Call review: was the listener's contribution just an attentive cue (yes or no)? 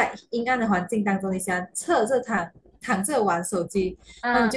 yes